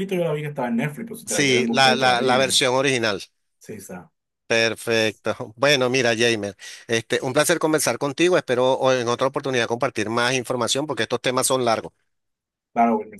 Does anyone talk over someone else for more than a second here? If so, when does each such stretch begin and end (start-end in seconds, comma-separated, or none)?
1.2-2.6